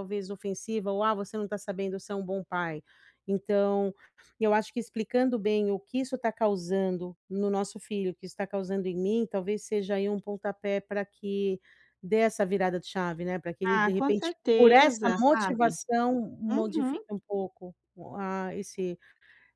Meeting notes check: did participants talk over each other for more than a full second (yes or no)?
yes